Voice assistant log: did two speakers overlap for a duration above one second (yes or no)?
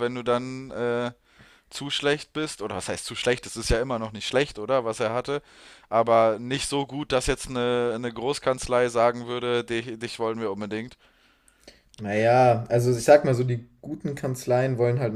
no